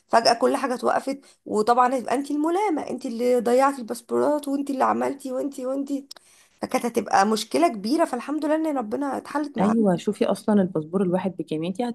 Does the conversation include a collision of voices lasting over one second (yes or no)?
no